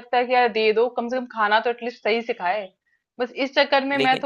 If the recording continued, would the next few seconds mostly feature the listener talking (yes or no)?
no